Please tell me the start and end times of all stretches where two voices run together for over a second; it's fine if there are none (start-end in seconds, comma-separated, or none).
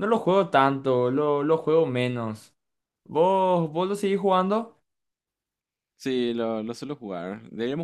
none